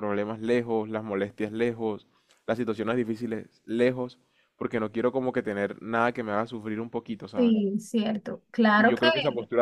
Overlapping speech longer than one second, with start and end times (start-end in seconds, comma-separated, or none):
none